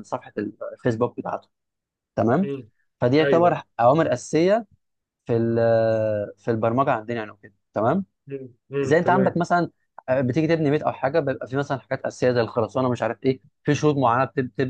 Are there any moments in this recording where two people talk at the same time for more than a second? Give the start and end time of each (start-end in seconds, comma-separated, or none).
none